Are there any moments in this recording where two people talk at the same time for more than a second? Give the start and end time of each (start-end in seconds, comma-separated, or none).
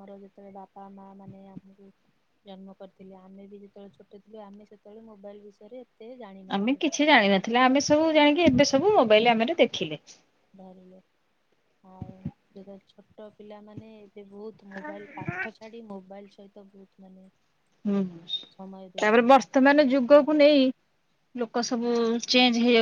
19.0-20.4